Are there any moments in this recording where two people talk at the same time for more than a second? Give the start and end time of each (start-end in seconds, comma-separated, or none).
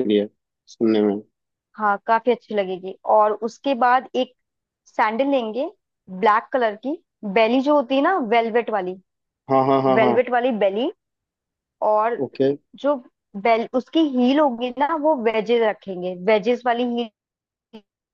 none